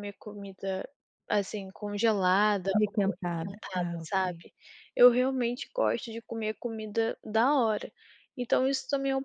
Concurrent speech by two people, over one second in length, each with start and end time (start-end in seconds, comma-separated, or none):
2.7-4.5